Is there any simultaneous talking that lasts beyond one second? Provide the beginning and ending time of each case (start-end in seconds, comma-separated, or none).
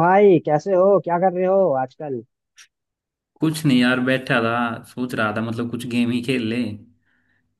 none